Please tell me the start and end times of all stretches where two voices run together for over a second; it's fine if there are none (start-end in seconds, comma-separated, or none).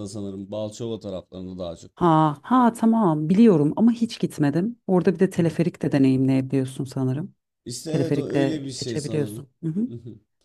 7.9-9.5